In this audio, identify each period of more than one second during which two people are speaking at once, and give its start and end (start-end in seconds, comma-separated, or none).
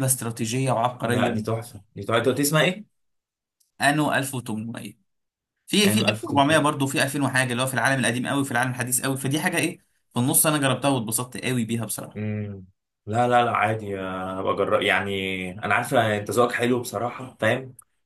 none